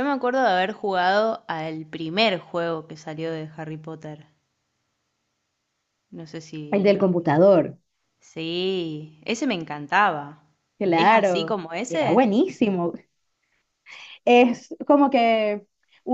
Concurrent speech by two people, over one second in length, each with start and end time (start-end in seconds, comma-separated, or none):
10.9-12.3